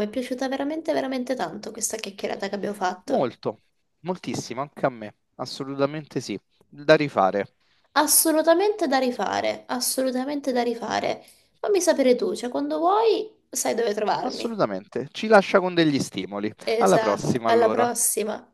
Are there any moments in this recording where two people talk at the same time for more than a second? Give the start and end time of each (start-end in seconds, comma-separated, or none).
16.7-17.9